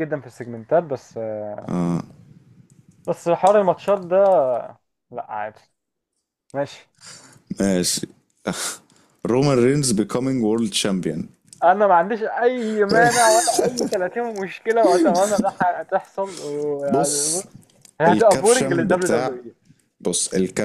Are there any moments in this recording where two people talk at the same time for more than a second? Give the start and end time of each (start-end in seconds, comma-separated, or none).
18.1-19.4